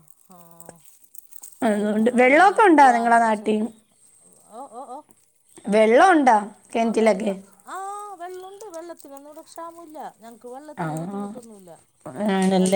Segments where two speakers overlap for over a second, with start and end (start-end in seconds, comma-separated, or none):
1.8-3.5